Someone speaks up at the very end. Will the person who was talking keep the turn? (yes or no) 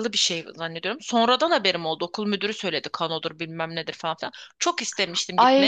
no